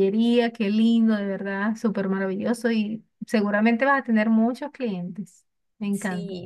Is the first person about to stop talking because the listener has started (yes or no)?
yes